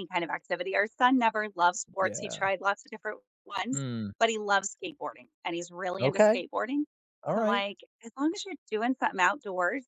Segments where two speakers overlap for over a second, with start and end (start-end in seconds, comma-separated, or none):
none